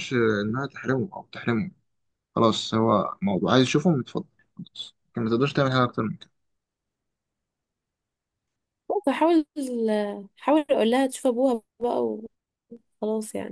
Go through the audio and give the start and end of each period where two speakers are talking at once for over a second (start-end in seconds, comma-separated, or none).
none